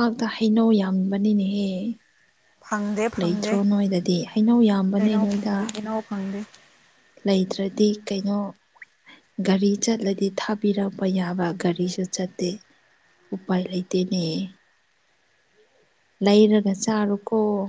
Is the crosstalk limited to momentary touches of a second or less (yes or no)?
yes